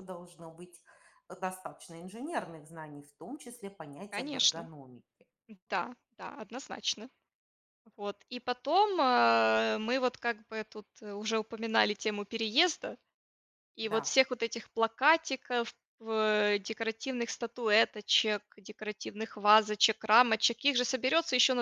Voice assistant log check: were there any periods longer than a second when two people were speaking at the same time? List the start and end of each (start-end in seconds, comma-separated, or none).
none